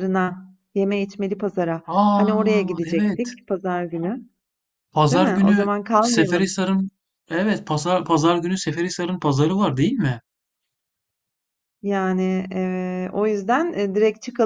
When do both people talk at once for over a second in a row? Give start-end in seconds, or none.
1.9-3.3, 5.1-6.5